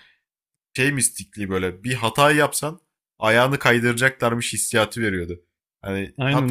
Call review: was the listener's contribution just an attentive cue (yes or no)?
yes